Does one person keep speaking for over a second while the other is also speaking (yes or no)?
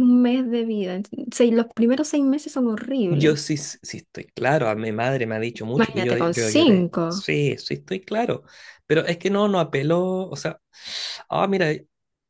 yes